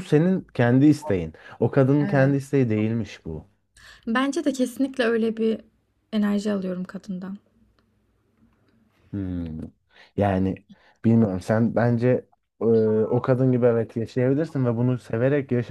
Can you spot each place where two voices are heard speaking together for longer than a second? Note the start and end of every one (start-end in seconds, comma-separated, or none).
none